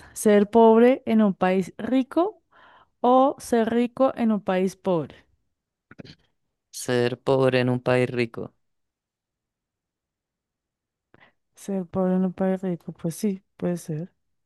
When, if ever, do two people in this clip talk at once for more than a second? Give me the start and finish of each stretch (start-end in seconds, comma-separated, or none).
none